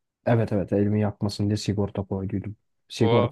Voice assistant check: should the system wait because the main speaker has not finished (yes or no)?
yes